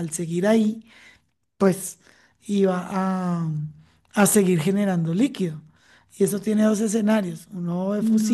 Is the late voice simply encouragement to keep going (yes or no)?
yes